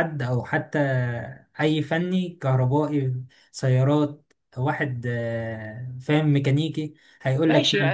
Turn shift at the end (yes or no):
yes